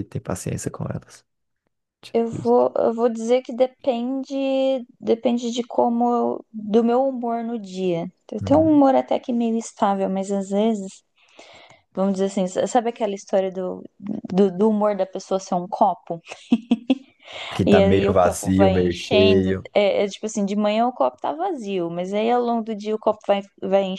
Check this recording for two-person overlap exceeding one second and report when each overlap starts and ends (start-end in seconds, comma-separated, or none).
17.6-19.7